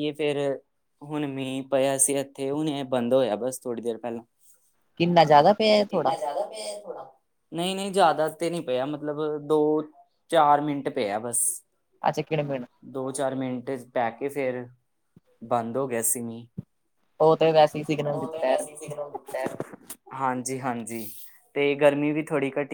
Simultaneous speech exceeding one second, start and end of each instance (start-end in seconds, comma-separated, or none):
none